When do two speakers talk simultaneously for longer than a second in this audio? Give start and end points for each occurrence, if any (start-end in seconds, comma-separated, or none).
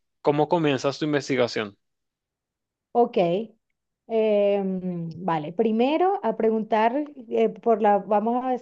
none